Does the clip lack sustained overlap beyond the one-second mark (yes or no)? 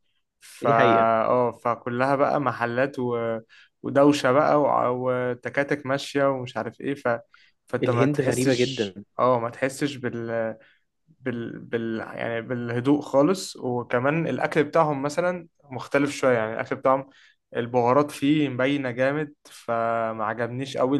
no